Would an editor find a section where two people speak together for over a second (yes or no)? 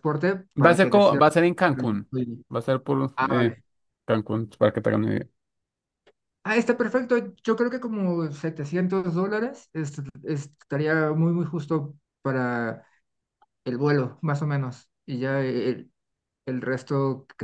no